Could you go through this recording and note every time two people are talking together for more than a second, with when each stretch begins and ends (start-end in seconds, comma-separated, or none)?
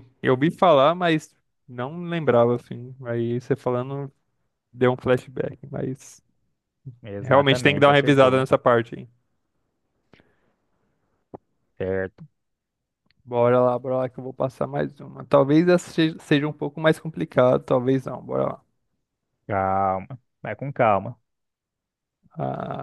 7.2-8.4